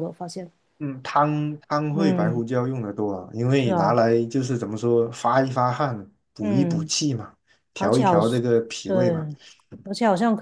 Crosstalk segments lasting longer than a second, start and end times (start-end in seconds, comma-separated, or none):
none